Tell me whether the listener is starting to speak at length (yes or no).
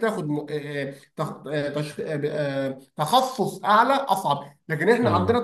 no